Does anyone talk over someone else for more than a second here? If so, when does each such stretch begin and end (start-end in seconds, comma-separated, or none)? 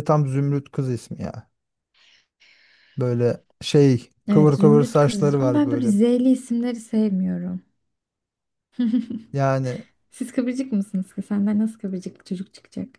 4.3-6.0